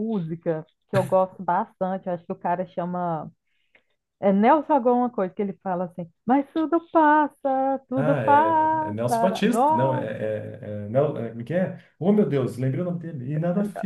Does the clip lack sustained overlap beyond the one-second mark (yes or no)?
no